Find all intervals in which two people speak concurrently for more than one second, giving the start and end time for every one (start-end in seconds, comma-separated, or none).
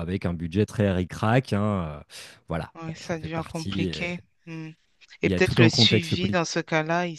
2.7-4.1, 5.2-6.4